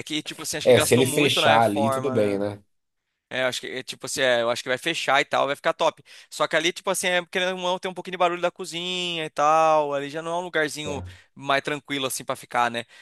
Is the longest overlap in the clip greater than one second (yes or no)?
yes